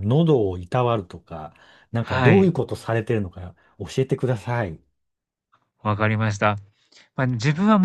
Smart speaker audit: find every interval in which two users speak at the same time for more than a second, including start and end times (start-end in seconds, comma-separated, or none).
none